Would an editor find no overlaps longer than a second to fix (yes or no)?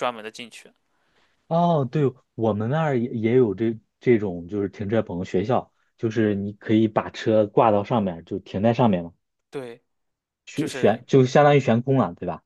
yes